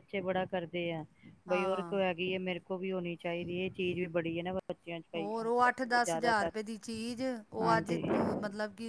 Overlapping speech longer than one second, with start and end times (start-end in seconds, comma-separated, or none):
none